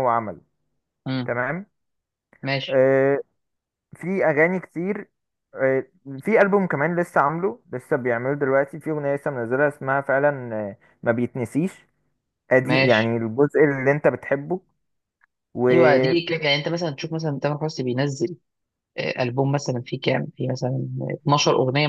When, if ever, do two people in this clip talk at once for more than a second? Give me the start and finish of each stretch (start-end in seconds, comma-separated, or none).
none